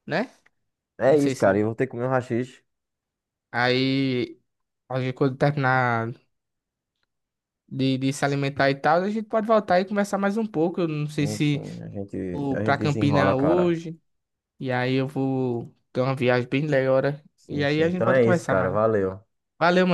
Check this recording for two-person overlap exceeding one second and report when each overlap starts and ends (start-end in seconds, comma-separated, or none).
12.3-13.8, 17.4-18.8